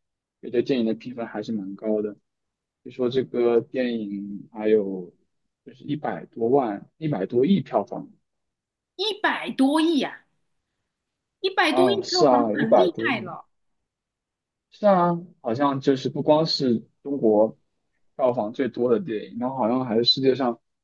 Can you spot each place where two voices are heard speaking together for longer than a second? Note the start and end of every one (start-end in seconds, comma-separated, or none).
11.7-13.3